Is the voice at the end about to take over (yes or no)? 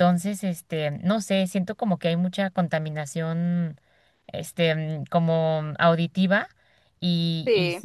no